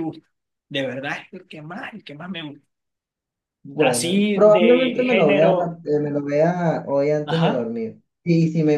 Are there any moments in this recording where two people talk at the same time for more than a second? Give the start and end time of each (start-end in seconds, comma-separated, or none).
3.8-5.8